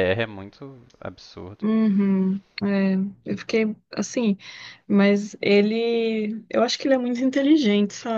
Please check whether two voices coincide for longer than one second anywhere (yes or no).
no